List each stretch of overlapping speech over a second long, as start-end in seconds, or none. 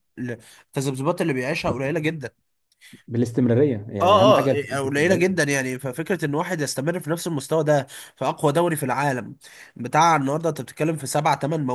4.0-5.4